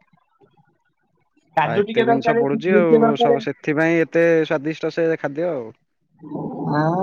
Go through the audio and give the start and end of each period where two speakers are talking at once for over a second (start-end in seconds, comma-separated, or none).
1.9-3.4